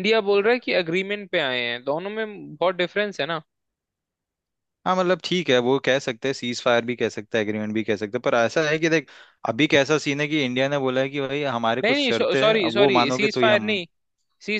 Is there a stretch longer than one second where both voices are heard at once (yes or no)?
yes